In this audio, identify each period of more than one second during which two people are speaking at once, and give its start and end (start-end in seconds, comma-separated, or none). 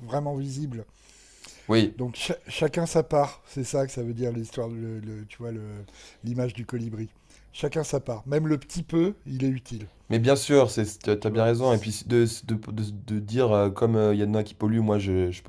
none